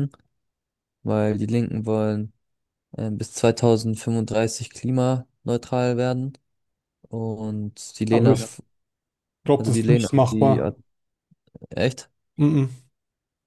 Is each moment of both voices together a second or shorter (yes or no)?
no